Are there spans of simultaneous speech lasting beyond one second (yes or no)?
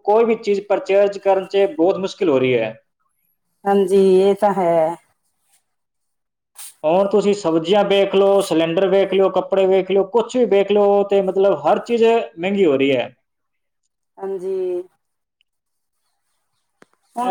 no